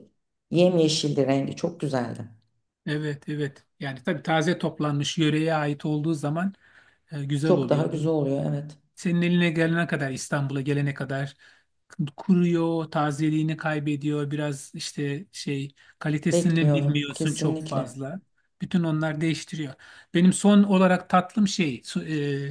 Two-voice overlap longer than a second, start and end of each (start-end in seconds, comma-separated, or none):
16.3-17.9